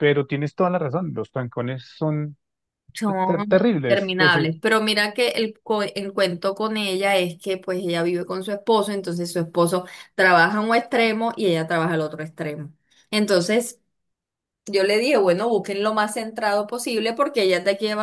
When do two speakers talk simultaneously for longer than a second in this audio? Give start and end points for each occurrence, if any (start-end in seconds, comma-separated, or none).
3.2-4.5